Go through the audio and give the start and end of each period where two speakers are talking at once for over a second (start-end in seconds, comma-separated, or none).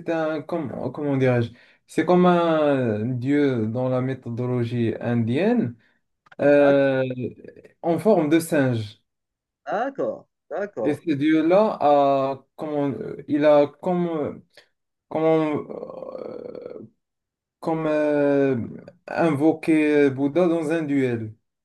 none